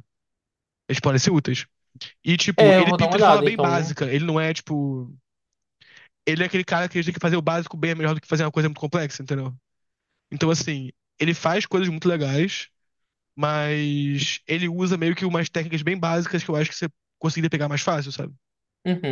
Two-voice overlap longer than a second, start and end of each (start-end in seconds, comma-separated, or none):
2.6-3.9